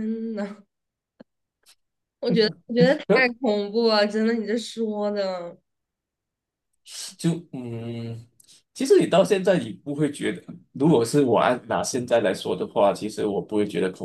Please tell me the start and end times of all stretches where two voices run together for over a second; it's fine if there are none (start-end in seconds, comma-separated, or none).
none